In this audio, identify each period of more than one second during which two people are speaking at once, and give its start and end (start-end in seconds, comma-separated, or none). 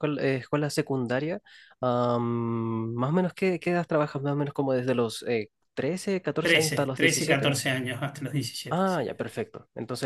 6.4-7.6